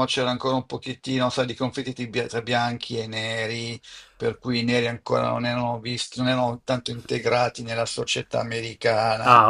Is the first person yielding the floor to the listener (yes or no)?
yes